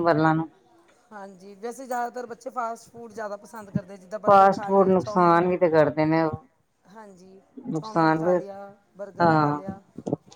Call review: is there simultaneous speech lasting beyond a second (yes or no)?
yes